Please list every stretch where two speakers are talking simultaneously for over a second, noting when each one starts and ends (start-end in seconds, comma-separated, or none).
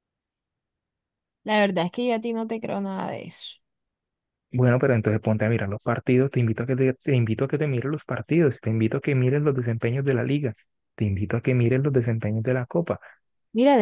none